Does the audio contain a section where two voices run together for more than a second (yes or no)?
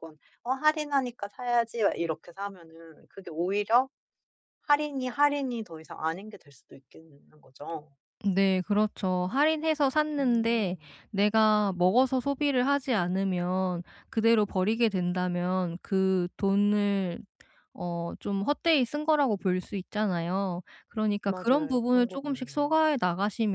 yes